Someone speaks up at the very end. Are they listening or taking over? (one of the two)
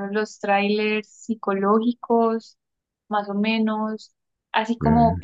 listening